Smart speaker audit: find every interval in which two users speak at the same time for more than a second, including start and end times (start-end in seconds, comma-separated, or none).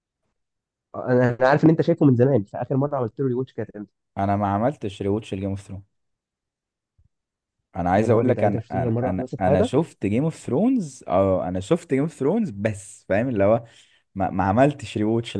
8.0-9.7